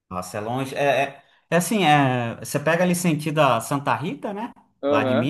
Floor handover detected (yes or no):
no